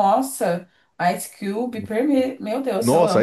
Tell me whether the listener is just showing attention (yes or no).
no